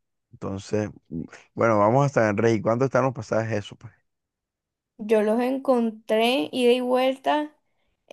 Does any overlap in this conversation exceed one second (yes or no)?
no